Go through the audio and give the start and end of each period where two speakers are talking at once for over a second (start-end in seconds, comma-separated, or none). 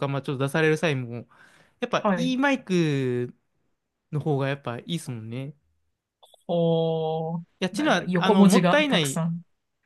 7.6-9.2